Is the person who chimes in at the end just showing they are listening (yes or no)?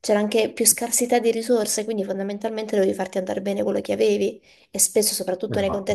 yes